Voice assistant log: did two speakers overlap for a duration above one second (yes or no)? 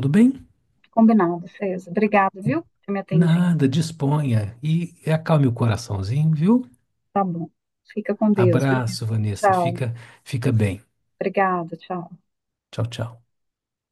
yes